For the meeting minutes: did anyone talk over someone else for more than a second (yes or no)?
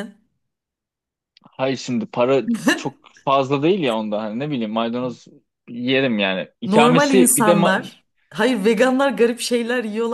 yes